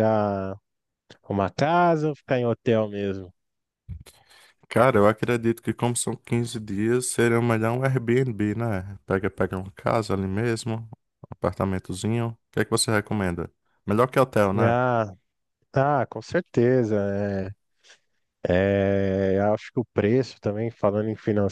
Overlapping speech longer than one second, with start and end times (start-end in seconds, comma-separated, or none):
none